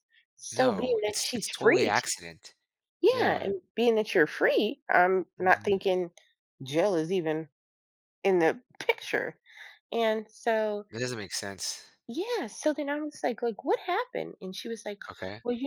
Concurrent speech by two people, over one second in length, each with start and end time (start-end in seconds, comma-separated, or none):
0.5-2.0